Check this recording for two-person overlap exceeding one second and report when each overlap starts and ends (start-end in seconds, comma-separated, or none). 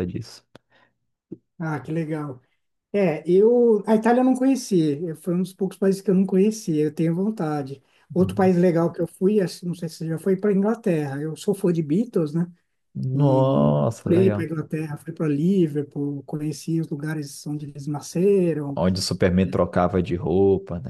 13.1-14.5